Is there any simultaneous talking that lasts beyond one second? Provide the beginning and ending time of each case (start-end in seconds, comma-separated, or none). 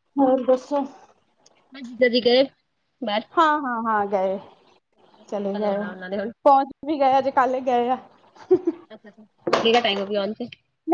none